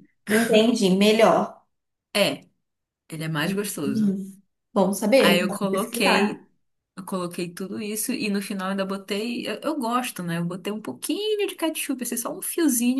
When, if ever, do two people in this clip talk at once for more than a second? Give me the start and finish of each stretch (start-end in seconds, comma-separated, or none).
5.2-6.5